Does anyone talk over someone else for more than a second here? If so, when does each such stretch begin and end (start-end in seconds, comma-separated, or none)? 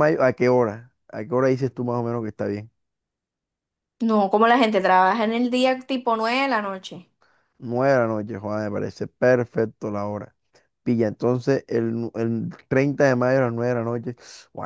none